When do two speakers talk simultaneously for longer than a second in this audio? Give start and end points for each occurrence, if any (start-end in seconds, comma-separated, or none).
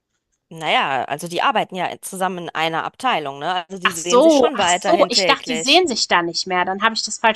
3.8-5.8